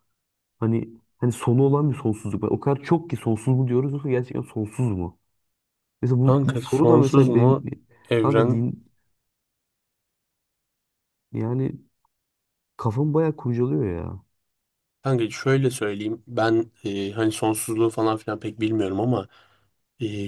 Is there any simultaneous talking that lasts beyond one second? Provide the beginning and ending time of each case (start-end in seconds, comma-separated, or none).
6.2-7.5